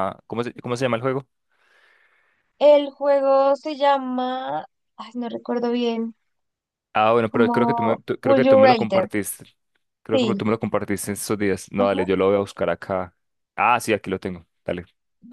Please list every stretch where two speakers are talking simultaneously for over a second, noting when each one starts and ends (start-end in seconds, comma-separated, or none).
7.3-9.1